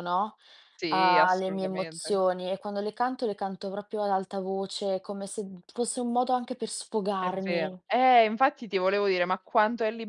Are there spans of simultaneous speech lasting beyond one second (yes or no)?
yes